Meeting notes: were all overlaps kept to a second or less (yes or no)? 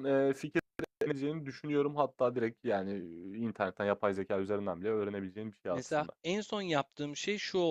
yes